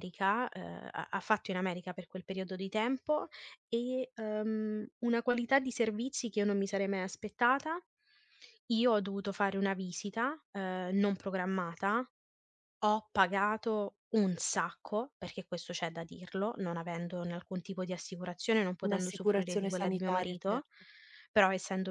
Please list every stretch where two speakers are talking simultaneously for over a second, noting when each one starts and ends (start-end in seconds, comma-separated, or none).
18.8-20.7